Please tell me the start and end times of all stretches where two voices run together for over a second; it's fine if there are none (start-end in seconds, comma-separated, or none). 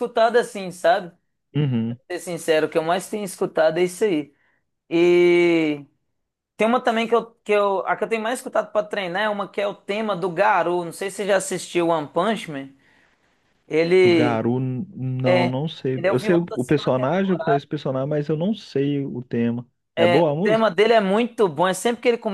16.0-17.4